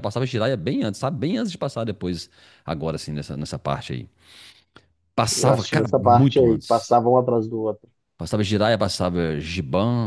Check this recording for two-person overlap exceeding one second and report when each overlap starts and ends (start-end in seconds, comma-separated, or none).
5.3-7.0